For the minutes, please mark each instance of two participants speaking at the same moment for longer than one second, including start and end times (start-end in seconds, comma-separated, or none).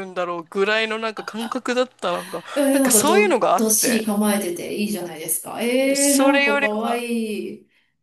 2.5-4.0, 5.8-7.0